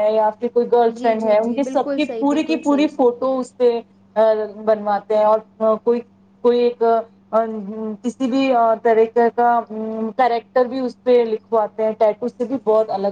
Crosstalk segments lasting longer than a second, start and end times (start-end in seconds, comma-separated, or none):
1.0-2.9